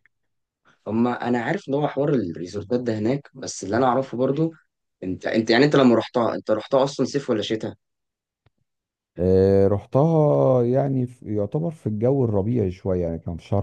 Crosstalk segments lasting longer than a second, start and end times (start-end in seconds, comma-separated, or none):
none